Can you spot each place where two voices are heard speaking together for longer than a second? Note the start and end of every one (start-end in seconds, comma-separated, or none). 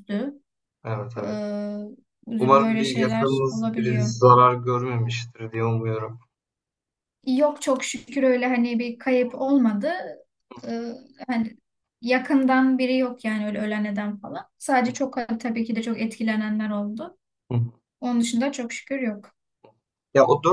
2.4-4.1